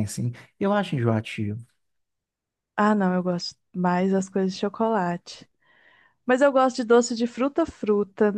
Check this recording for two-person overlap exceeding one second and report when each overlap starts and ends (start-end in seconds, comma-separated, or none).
none